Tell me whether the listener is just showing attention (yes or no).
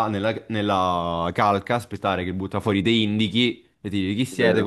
yes